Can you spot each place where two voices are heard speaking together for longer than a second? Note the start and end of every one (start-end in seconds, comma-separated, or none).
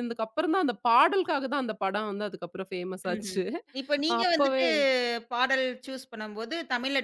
none